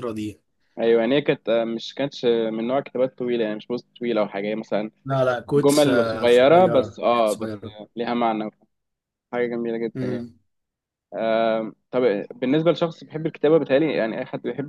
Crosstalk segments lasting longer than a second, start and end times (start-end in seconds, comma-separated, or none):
5.5-7.6